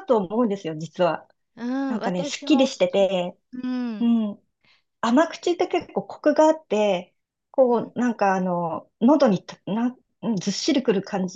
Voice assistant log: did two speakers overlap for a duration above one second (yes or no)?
yes